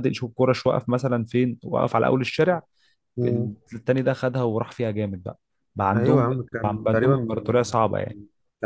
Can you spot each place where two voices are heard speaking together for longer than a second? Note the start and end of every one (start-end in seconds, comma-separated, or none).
5.9-7.5